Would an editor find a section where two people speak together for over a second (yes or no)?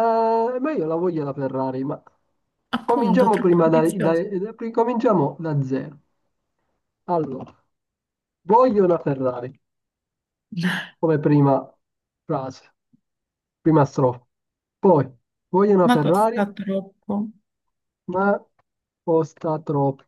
yes